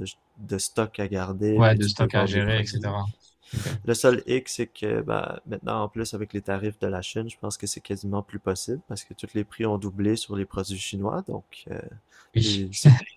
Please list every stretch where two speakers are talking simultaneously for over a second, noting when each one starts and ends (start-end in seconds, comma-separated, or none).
1.5-2.9